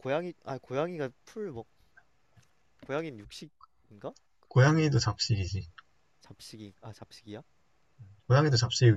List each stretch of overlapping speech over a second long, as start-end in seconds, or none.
none